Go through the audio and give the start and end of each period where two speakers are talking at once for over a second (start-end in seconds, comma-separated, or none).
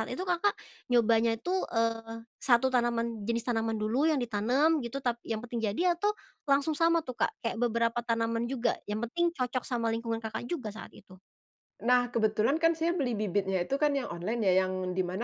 none